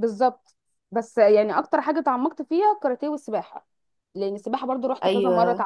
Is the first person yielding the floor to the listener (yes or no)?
no